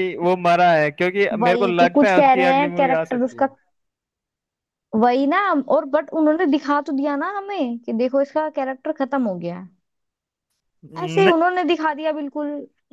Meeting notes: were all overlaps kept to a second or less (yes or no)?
no